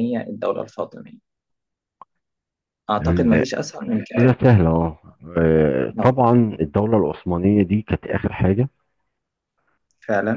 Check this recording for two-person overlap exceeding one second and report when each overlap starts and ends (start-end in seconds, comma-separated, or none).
none